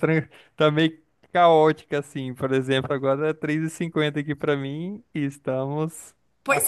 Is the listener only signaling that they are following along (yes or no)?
no